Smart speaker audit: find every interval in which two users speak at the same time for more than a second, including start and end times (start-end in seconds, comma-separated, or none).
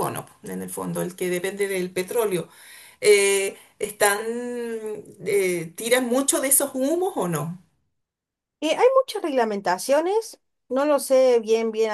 none